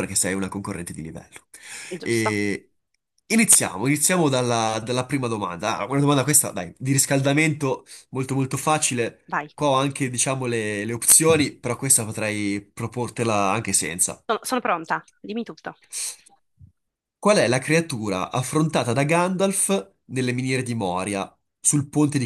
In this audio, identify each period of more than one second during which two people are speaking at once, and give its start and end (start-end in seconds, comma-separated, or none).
none